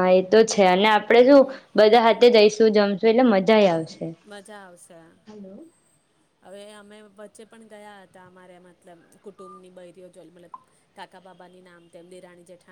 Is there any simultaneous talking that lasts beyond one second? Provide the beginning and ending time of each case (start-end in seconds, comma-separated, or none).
none